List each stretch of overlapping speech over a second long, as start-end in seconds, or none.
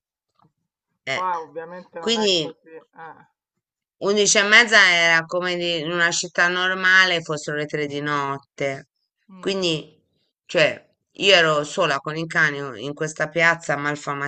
none